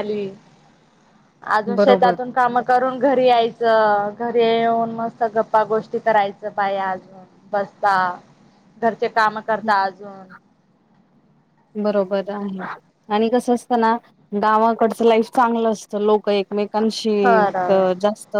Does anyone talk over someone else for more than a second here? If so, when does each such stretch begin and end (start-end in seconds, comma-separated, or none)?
none